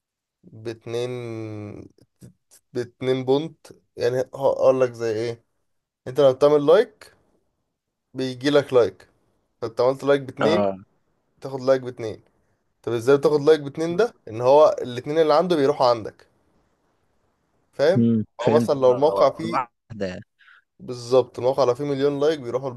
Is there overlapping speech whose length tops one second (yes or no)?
yes